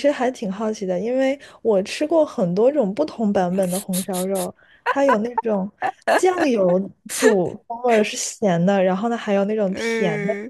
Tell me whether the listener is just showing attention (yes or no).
no